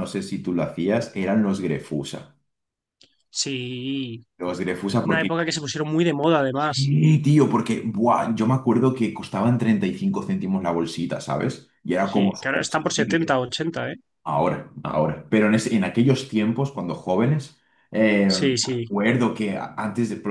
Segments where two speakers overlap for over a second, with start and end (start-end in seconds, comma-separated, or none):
12.1-13.4